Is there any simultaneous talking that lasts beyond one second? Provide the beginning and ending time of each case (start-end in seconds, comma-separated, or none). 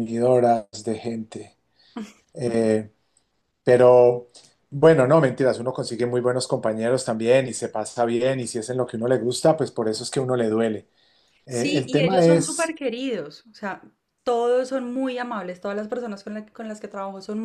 11.5-12.7